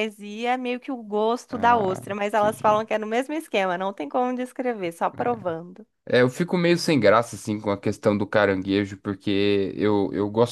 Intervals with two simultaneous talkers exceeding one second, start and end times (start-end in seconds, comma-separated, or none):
1.5-2.9